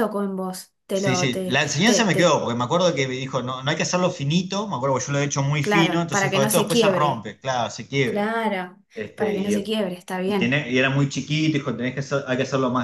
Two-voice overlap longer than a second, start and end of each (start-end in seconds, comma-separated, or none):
0.9-2.4, 5.6-7.3